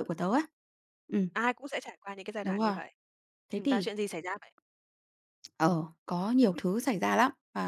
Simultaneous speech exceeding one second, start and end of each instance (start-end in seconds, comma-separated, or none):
none